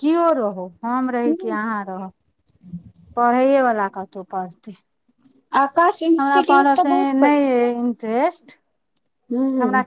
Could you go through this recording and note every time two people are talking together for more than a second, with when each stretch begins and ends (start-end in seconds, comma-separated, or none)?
none